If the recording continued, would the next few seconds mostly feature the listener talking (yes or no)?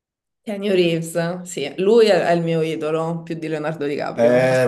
yes